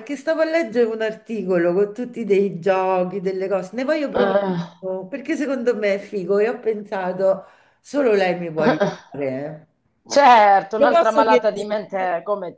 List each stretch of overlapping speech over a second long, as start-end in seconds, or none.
10.2-11.9